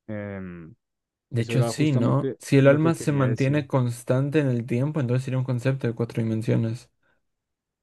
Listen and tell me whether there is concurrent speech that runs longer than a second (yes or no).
yes